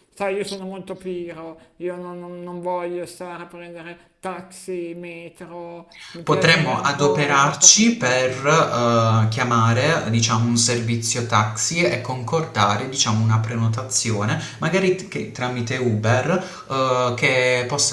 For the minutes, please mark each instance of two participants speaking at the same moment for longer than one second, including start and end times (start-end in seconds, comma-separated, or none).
6.2-8.5